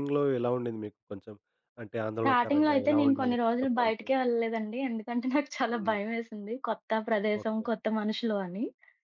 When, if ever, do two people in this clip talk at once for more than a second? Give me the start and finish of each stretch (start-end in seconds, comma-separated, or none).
2.2-4.1